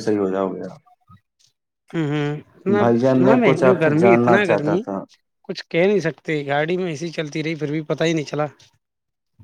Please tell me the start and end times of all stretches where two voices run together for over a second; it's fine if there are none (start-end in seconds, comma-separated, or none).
2.8-4.8